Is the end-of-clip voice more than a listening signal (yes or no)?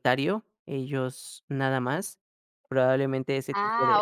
yes